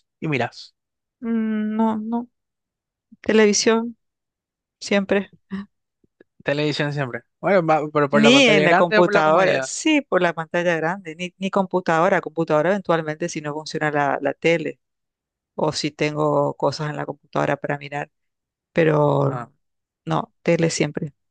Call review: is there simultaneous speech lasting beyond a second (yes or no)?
yes